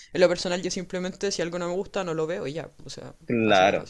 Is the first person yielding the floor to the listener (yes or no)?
yes